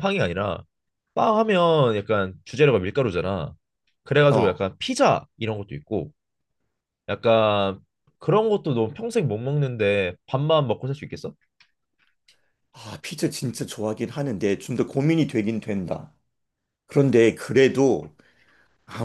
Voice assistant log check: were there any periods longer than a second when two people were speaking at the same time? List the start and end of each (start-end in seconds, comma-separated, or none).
none